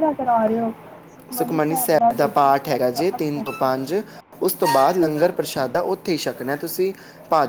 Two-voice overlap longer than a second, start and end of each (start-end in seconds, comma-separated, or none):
2.1-3.9